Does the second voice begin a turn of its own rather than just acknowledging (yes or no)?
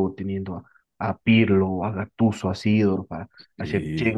no